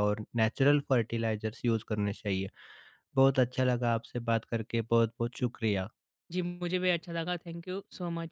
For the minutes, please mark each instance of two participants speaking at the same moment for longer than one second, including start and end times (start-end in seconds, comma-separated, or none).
none